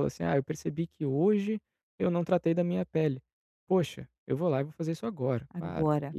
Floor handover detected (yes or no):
no